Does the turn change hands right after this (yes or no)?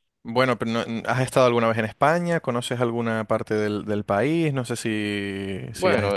yes